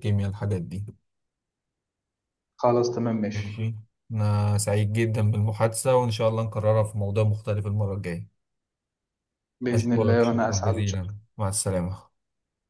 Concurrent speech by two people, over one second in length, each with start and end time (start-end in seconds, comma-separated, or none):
9.7-11.0